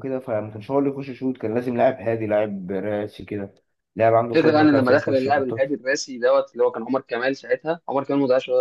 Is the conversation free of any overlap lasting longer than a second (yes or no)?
no